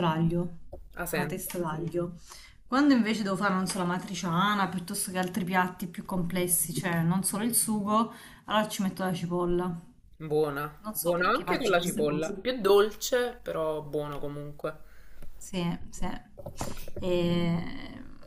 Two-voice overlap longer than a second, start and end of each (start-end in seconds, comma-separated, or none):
10.8-12.4